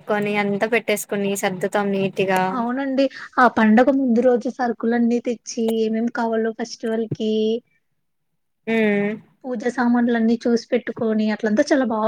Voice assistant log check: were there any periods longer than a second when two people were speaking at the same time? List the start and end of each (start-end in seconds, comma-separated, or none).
none